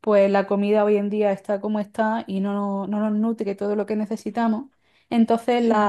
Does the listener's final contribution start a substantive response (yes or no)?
no